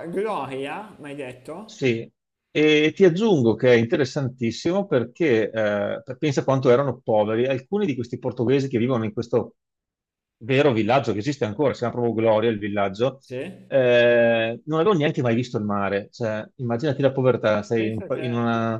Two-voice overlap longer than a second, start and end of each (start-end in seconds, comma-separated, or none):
none